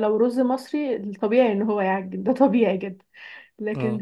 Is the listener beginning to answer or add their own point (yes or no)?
no